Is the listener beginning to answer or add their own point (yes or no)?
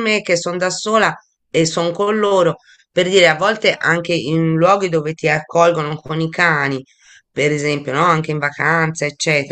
no